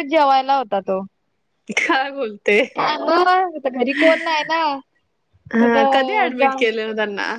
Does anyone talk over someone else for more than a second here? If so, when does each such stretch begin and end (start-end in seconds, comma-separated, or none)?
none